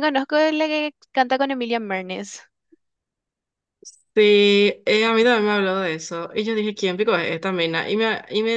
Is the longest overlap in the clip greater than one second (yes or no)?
no